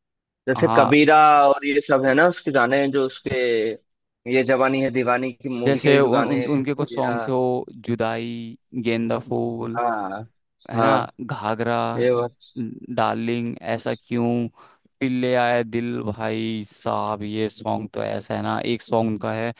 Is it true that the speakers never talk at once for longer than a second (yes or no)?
no